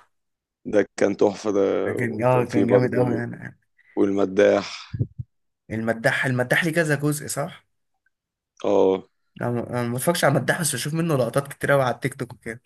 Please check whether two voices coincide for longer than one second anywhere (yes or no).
yes